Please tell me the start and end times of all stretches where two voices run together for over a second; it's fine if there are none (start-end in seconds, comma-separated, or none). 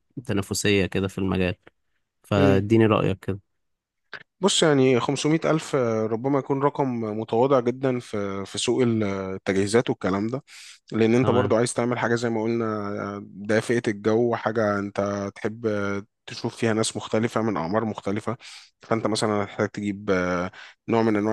none